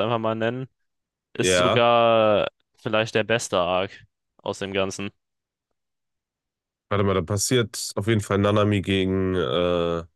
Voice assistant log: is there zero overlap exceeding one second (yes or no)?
yes